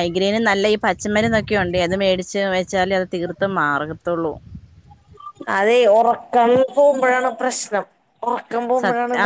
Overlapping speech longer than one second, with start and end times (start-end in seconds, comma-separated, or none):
none